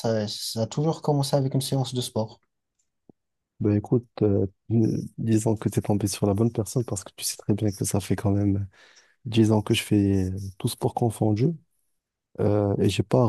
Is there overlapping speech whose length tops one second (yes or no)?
no